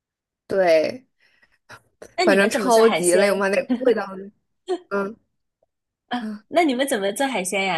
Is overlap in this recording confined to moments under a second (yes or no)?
no